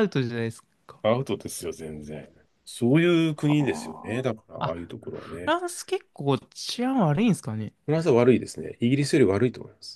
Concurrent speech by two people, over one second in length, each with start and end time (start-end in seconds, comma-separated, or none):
3.3-5.5